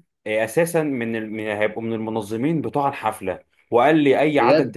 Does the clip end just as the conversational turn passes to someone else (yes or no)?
no